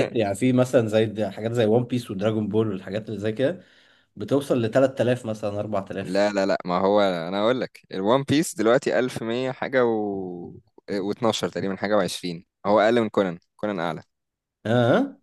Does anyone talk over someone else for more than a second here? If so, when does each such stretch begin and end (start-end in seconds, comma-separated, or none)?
none